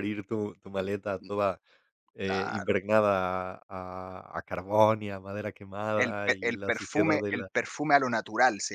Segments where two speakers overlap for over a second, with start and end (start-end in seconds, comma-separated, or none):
6.0-7.5